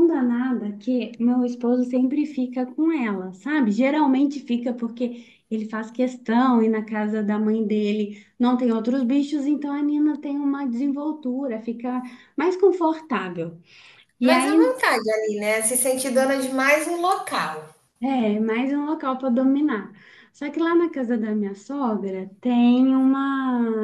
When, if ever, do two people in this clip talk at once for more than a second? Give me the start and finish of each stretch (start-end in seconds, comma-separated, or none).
none